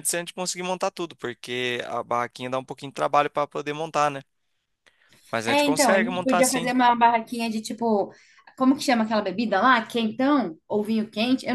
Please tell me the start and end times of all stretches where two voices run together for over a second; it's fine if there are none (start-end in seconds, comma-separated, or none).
5.5-6.8